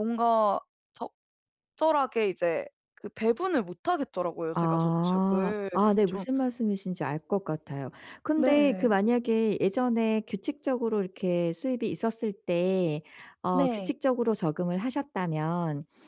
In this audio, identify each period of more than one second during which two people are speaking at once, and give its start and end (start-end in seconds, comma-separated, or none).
4.5-6.2